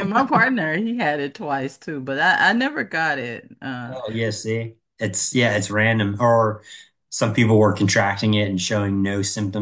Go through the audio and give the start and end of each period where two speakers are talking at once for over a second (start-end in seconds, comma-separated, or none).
none